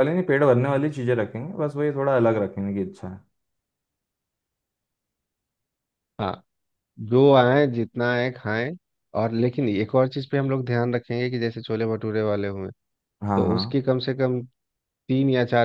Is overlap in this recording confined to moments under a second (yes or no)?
yes